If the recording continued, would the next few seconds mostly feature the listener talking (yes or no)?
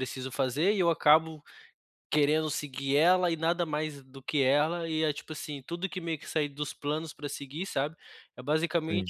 no